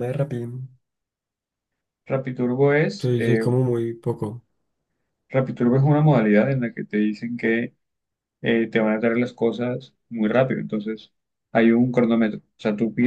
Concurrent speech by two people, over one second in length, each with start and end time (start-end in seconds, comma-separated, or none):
none